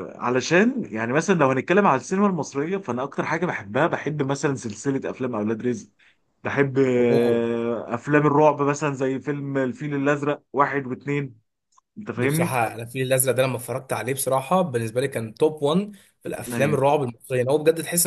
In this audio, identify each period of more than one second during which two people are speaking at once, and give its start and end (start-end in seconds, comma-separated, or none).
none